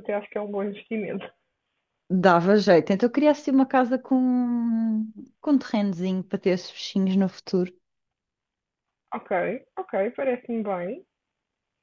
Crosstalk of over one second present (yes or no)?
no